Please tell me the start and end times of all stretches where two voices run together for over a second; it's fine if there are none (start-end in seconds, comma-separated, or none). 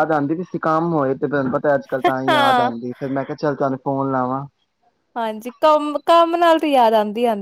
none